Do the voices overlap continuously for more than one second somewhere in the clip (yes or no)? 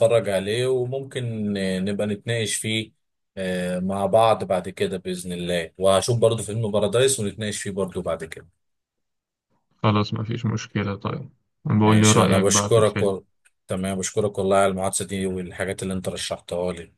yes